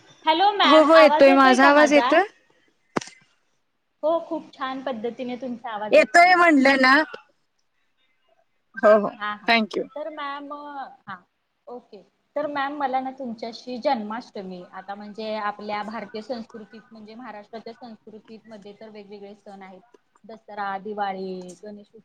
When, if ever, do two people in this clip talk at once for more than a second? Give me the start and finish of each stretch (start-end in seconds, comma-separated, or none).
none